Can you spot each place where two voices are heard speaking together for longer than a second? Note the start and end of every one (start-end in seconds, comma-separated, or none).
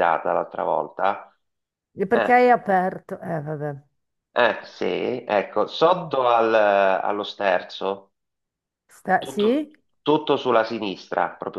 none